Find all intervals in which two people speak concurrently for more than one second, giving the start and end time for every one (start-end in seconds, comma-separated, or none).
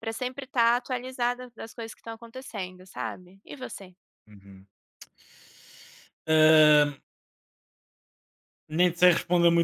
none